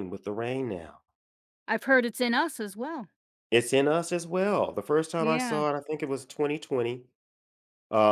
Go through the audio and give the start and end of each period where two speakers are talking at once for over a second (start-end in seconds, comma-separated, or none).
none